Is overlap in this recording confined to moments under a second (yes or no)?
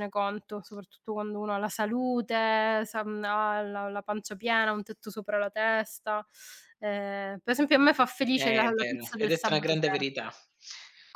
no